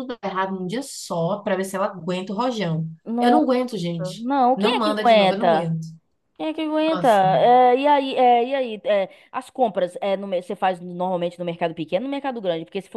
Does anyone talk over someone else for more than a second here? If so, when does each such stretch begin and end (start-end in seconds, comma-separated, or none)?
4.2-5.8